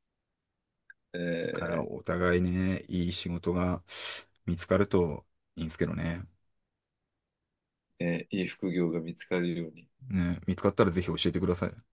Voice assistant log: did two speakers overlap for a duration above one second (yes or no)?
no